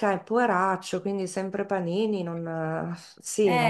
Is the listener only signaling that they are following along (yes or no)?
no